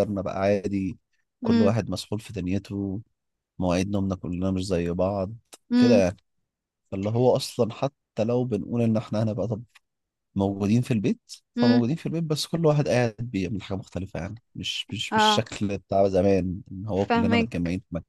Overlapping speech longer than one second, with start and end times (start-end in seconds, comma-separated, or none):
none